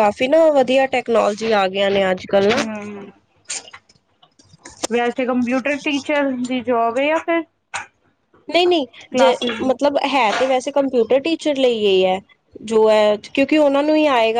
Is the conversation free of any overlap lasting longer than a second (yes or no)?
yes